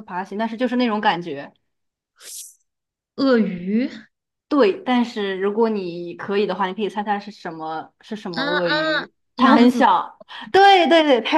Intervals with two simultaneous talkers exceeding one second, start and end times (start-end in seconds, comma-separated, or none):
8.3-9.9